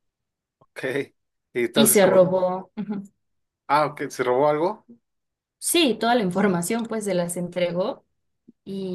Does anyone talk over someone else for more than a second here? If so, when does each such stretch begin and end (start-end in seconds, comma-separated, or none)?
none